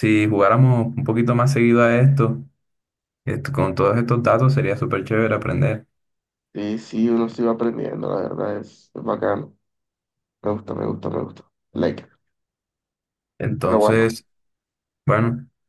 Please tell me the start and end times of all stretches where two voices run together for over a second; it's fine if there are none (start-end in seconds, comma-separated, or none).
none